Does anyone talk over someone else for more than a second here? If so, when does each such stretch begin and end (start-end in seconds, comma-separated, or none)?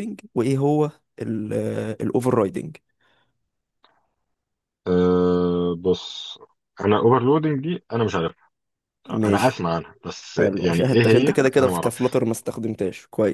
10.4-12.0